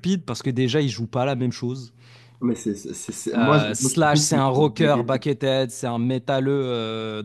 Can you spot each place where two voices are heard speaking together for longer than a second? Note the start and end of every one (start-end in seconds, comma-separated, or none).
3.3-5.2